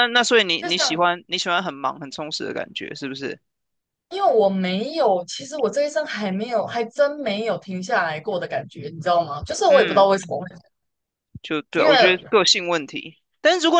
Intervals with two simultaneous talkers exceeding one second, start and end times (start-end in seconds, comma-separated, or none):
none